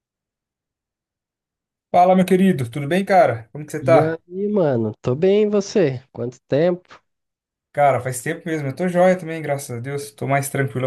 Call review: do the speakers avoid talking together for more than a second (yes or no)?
yes